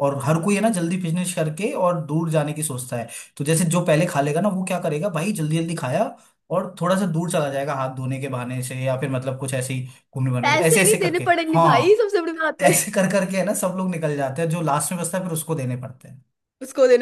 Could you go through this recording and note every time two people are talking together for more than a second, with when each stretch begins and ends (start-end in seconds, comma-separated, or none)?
10.4-12.0